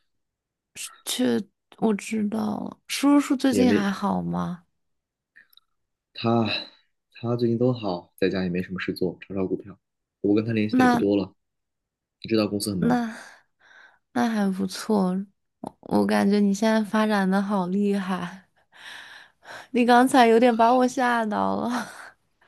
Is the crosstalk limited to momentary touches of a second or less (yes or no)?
yes